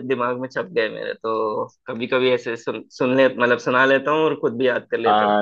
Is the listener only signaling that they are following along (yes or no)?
no